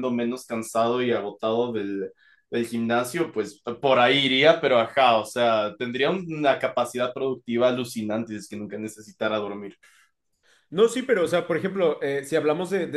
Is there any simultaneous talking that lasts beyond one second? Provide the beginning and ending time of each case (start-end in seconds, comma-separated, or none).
none